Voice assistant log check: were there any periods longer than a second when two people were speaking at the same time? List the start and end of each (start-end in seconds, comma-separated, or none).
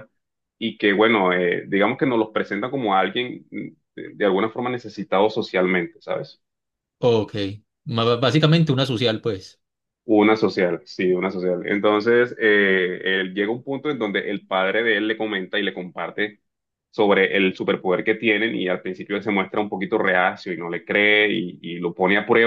none